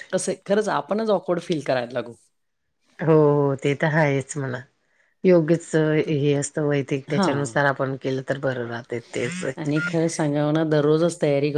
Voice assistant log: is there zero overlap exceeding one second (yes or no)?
yes